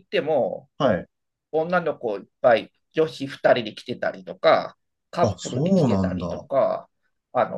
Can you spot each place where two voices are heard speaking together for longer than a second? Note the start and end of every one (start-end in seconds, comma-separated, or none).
5.2-6.5